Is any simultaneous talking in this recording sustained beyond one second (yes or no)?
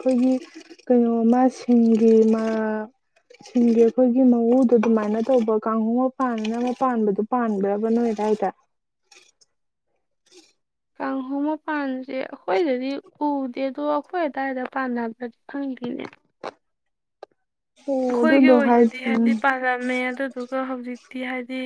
yes